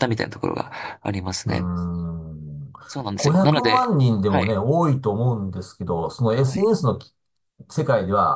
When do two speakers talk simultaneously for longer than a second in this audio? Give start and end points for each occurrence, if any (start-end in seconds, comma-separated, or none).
3.1-4.6